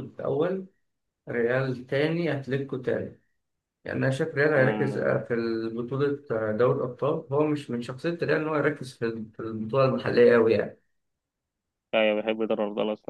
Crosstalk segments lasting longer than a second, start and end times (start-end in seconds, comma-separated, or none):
none